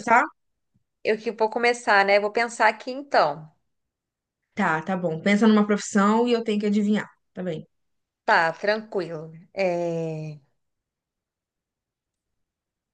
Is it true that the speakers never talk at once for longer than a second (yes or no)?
yes